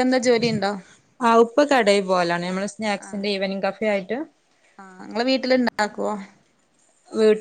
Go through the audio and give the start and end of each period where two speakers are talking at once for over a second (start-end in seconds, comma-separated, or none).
none